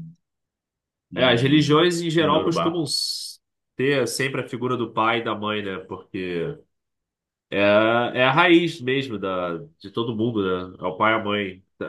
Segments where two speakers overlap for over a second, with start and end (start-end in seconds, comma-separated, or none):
1.1-2.9